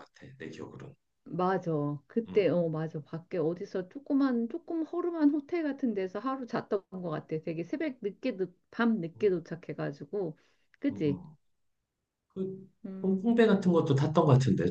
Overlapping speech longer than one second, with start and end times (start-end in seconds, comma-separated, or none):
none